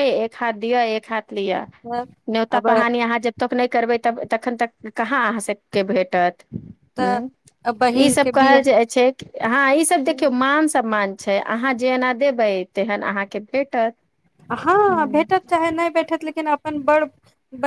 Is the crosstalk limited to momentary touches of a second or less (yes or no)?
yes